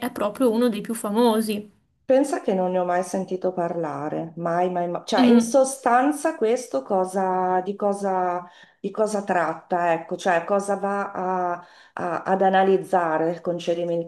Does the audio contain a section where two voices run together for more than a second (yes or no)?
no